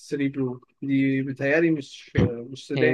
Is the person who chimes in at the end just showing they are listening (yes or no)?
no